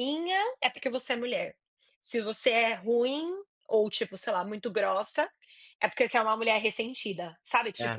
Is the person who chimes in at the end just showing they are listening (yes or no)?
no